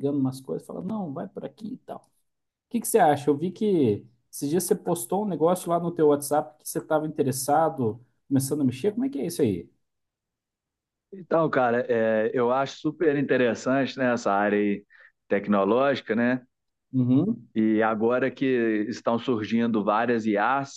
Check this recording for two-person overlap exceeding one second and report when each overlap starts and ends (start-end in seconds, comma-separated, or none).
none